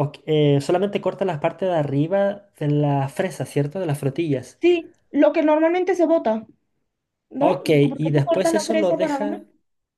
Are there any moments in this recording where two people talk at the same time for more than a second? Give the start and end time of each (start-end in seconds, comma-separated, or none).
7.4-9.4